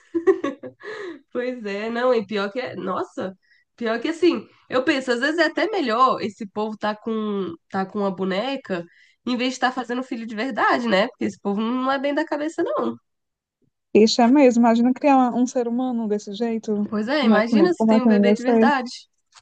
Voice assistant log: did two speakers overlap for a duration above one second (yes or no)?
yes